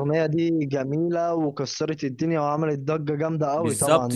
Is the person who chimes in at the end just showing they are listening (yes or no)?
no